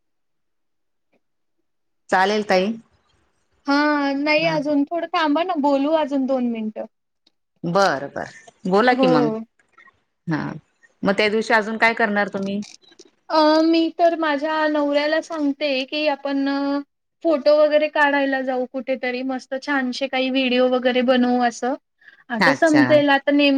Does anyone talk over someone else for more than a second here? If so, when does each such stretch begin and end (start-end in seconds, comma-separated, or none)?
none